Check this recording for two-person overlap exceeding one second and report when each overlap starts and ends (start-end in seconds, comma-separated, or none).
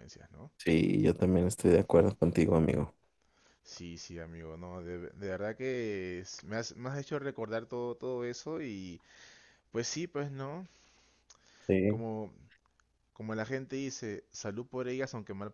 none